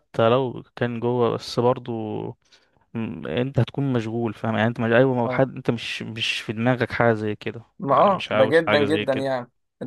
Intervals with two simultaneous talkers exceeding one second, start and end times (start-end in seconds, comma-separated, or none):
7.8-9.3